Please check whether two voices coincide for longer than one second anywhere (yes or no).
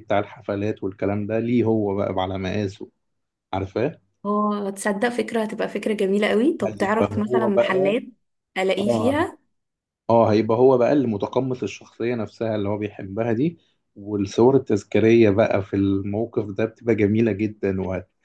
yes